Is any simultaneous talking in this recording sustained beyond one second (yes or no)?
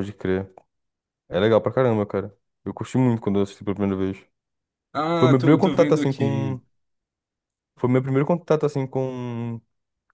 yes